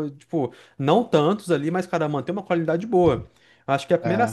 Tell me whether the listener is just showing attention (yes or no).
yes